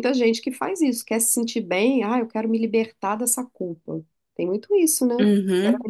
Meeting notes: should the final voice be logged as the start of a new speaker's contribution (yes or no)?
no